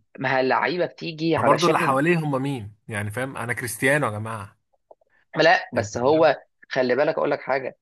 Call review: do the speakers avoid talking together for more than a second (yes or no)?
yes